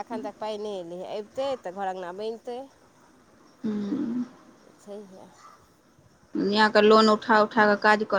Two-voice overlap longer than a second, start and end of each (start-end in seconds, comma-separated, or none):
none